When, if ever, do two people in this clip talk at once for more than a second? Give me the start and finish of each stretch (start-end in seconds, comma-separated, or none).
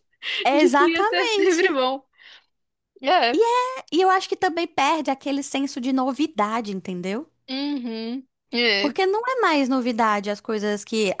0.6-1.8